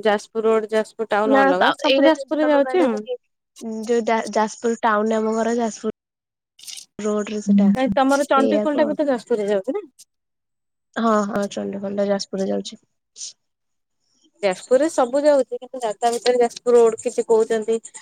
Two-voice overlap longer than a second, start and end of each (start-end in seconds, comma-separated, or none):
1.3-3.0